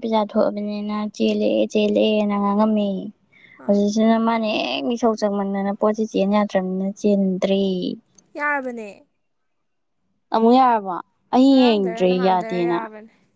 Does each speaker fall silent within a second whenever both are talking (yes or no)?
yes